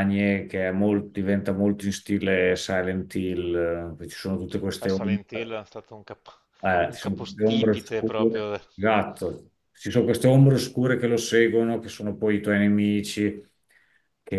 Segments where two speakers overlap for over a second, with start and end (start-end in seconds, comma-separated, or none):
6.8-8.6